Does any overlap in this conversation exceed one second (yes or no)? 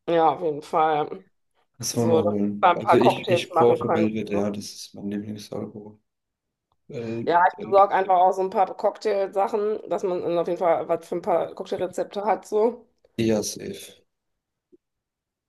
yes